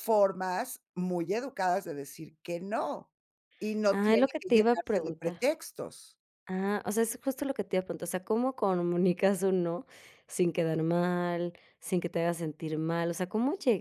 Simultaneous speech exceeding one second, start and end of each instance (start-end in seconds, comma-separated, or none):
3.9-5.4